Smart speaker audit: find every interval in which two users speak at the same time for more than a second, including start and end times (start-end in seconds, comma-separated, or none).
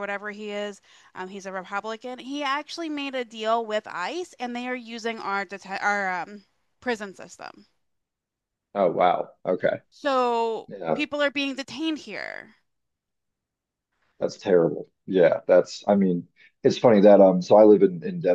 none